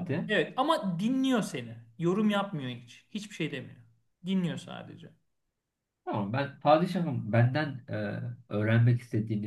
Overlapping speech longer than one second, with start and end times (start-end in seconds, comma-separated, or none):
none